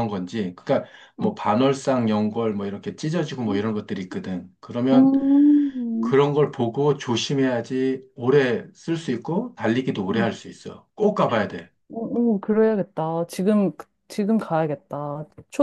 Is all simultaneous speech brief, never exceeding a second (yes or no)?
yes